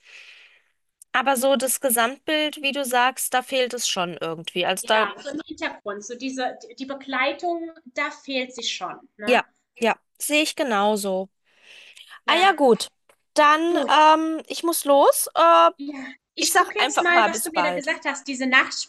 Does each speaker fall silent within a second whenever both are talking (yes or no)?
no